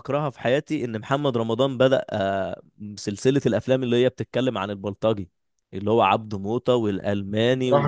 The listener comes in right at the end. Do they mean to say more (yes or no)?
yes